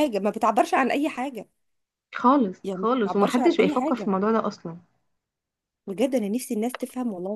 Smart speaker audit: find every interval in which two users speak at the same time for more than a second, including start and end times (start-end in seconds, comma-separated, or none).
2.6-4.1